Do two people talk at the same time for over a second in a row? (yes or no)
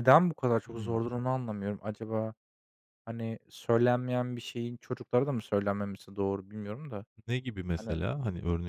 no